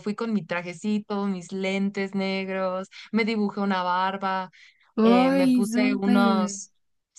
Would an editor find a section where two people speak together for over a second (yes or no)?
yes